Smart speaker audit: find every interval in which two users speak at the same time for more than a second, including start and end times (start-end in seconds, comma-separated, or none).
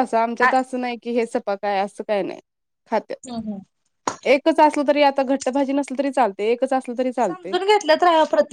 none